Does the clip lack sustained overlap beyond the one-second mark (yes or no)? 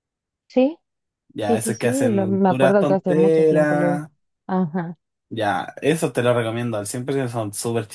no